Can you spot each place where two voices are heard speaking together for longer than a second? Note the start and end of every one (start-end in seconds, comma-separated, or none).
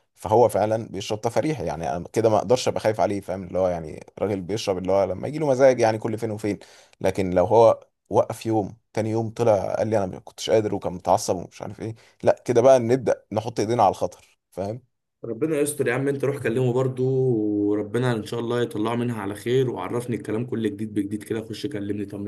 none